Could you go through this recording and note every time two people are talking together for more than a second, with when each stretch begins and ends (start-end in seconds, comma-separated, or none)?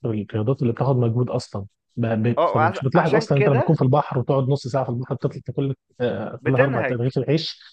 2.4-3.8